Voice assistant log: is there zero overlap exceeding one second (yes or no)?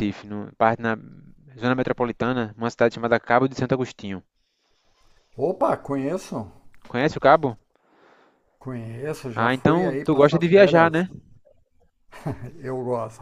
no